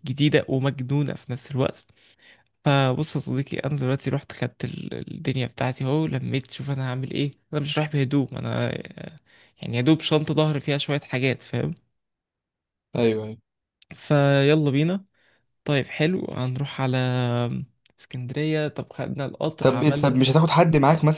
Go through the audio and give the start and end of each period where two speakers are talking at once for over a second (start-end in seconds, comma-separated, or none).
none